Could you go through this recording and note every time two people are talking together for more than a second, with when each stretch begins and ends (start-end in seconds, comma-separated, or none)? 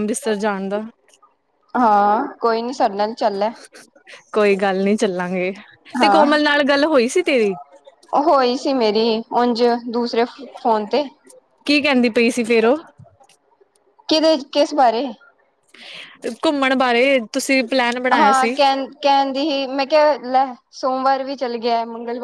none